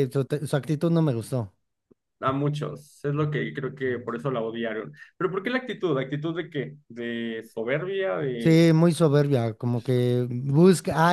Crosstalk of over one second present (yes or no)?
no